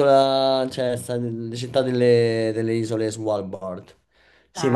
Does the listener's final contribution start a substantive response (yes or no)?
no